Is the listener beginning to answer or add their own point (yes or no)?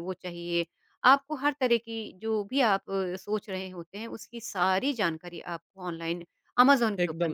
yes